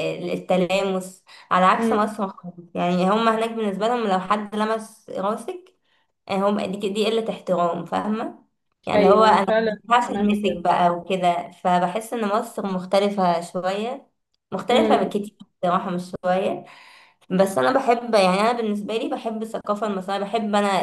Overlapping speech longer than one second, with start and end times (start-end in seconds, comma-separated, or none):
8.9-10.6